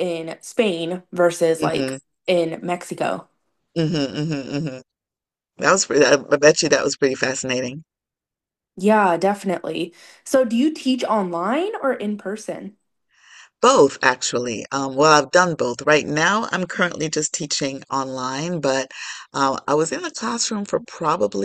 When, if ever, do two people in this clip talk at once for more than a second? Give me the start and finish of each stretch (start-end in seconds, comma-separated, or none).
none